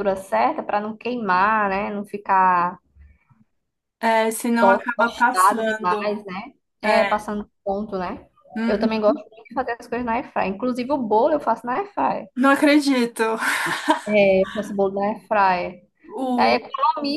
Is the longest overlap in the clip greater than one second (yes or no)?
yes